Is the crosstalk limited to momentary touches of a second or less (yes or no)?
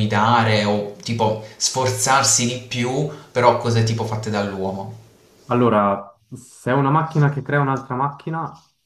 yes